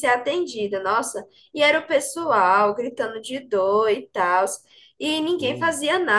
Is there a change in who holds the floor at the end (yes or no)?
no